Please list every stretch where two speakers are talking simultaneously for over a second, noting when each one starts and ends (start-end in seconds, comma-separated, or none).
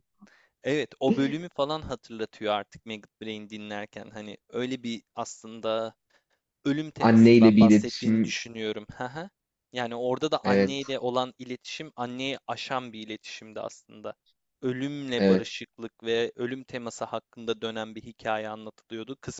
7.0-8.4